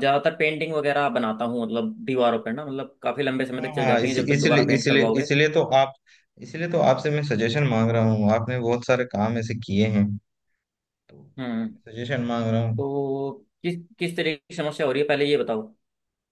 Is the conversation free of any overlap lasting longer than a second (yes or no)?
no